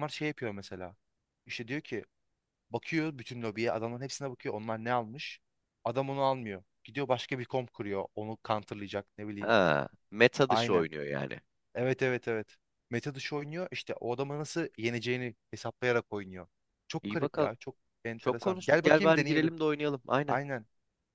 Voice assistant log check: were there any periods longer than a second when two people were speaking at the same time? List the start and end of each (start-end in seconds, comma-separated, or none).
18.2-19.5